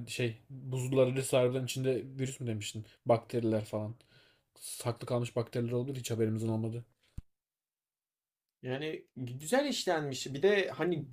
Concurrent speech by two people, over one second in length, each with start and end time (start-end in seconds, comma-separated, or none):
none